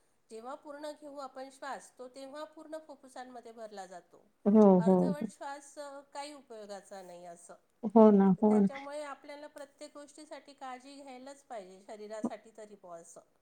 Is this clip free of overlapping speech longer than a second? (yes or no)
yes